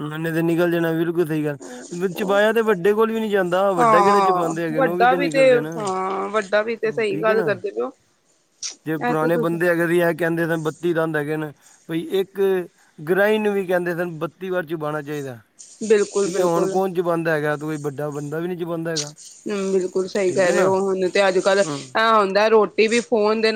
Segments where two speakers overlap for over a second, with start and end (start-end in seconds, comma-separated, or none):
3.8-5.1